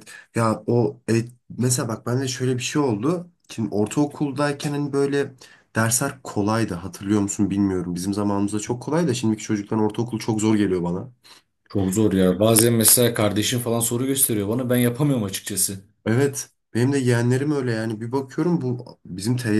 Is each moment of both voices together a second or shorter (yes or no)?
yes